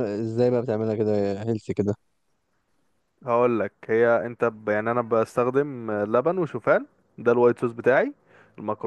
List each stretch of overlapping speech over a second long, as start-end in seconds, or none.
none